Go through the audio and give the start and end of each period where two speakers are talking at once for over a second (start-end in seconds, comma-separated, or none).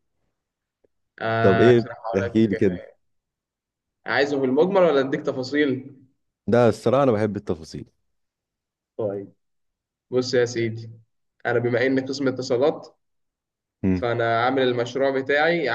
1.4-2.8